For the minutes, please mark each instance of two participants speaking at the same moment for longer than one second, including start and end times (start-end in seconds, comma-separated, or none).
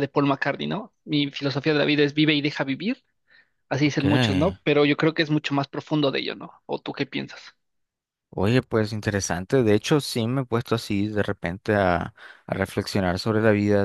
none